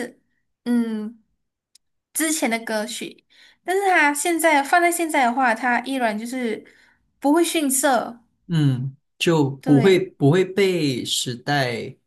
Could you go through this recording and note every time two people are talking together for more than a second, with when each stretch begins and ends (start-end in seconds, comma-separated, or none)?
none